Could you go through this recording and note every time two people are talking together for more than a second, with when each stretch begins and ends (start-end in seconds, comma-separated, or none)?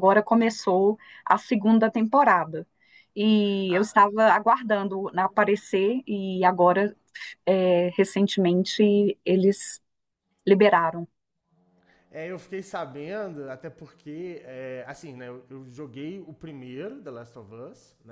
none